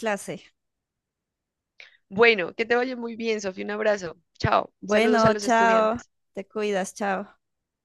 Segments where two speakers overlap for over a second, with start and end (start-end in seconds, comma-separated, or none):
4.8-6.1